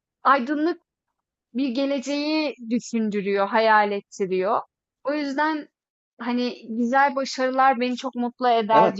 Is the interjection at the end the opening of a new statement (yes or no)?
yes